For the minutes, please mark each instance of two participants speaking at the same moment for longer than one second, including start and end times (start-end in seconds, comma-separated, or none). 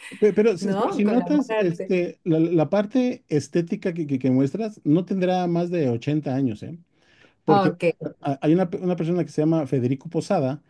0.6-1.9